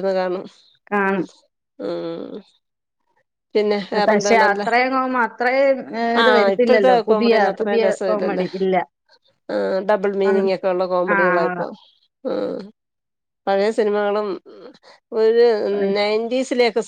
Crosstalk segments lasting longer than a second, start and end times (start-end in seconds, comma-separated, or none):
6.2-8.5